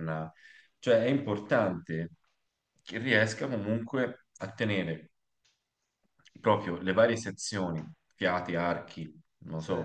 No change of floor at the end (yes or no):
yes